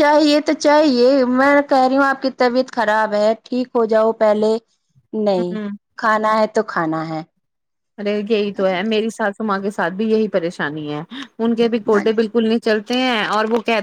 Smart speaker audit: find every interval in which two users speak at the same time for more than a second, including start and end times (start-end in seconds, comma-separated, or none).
none